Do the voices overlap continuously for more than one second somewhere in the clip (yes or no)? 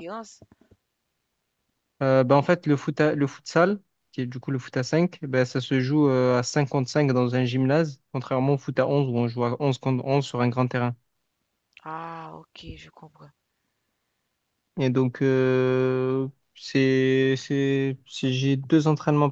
no